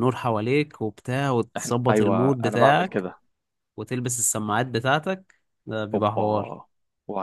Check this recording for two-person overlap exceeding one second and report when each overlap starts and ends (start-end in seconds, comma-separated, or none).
1.6-3.1